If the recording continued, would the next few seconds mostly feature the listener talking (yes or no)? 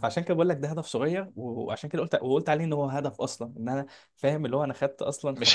no